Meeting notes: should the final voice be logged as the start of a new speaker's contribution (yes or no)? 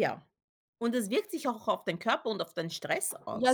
yes